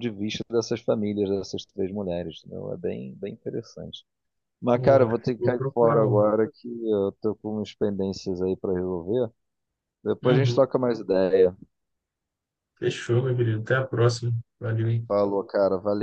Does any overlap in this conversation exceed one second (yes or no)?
yes